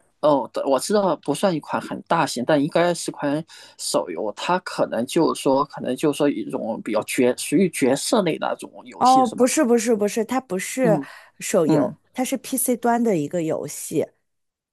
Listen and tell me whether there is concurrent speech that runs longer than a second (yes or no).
no